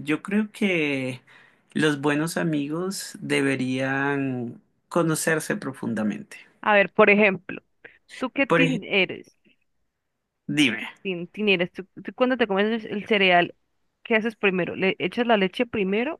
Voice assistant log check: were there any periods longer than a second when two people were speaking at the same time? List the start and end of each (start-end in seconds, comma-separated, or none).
none